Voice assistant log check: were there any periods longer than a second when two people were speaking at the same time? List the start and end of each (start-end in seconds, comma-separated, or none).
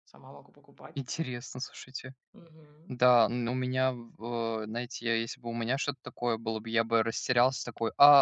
none